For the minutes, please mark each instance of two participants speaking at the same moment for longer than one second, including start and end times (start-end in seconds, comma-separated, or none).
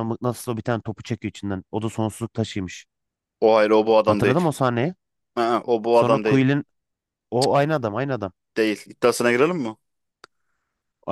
none